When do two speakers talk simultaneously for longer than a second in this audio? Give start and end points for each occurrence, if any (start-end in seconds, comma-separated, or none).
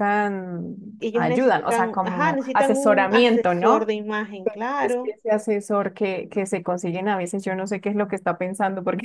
1.1-3.9